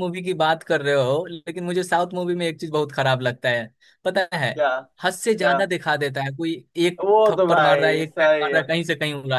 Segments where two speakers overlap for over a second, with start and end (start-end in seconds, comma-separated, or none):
7.0-8.6